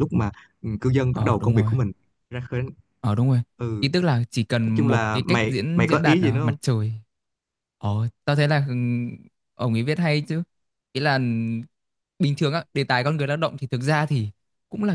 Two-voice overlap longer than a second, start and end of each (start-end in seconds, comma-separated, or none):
4.7-6.6